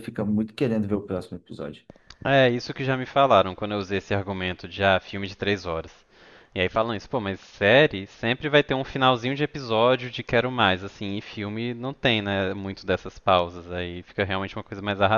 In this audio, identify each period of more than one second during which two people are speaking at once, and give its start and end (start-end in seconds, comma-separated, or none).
none